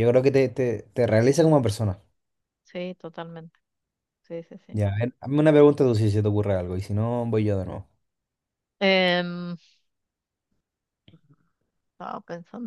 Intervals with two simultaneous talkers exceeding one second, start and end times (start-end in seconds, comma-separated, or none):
none